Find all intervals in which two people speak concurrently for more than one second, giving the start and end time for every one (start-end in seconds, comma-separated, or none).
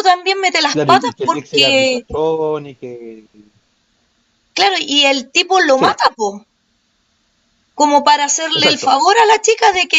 0.7-2.0